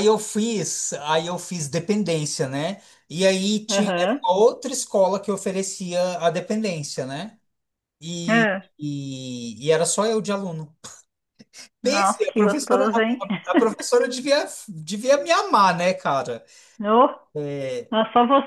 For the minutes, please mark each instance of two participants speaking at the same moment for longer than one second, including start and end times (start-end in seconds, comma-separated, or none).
11.8-13.3